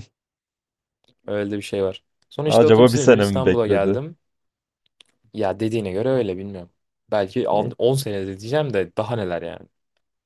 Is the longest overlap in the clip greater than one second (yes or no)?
yes